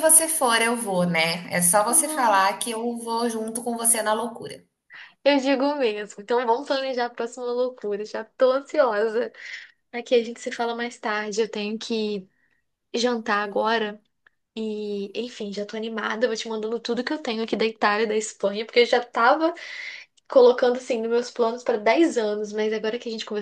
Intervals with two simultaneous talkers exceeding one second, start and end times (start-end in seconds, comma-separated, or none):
none